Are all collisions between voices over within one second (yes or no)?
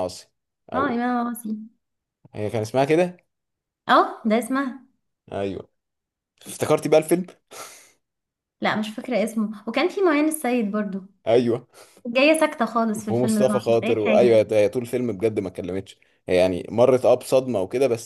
no